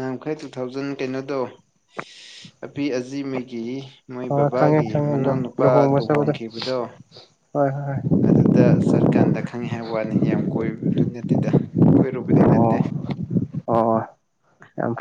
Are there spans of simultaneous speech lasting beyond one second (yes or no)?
yes